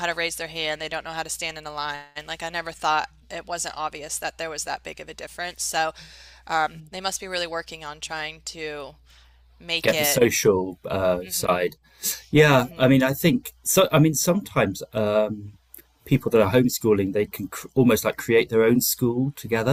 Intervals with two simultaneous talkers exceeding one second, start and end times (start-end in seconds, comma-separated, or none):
none